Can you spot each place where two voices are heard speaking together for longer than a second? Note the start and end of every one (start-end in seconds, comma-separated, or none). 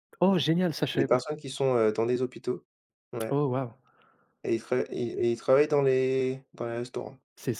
none